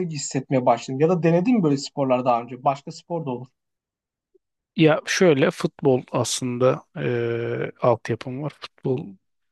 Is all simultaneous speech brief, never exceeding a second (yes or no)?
yes